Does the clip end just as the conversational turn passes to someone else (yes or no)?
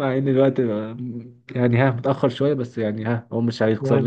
no